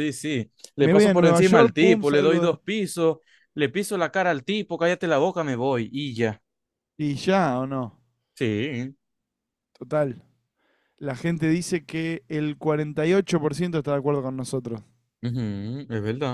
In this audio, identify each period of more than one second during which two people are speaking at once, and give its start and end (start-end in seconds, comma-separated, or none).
0.8-2.5